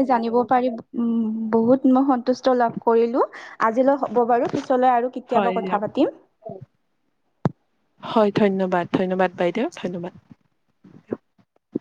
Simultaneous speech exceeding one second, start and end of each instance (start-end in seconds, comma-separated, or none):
none